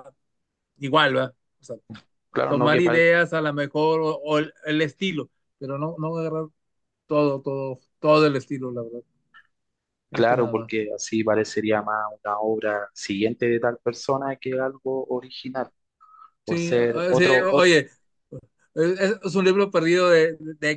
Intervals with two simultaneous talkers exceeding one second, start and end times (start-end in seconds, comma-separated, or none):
16.4-17.7